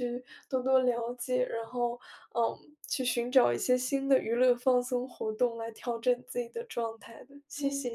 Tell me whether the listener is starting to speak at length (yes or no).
yes